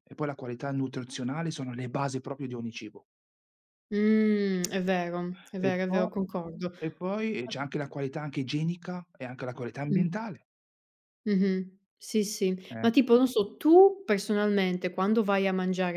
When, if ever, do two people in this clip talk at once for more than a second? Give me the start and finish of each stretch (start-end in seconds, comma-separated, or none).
none